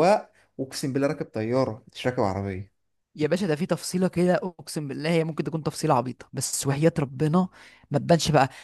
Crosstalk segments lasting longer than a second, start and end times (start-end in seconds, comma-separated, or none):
none